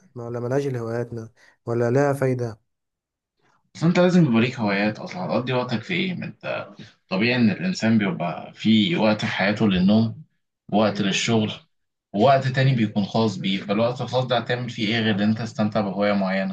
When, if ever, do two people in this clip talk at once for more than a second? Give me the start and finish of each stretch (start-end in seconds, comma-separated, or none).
none